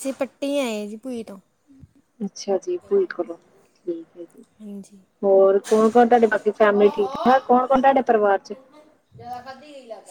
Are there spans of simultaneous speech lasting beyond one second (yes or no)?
no